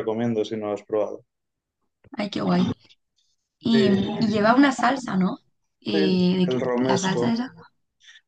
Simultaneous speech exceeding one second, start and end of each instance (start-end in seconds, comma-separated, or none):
5.9-7.3